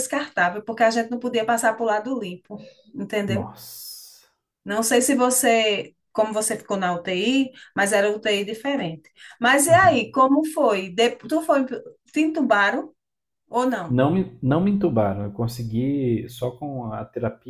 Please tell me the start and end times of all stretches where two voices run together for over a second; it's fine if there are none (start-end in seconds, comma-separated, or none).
none